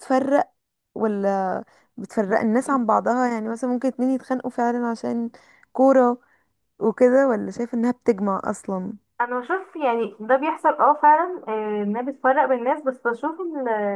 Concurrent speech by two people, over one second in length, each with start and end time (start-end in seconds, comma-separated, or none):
none